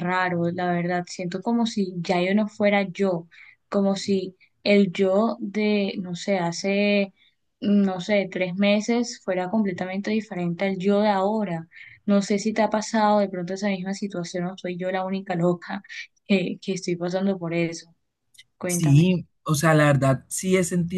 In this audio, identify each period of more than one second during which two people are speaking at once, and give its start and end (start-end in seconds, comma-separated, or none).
none